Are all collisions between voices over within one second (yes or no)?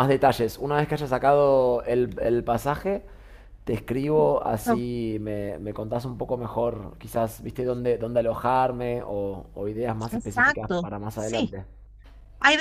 no